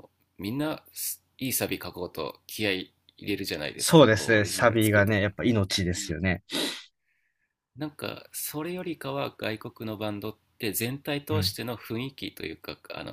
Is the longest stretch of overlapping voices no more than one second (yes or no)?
no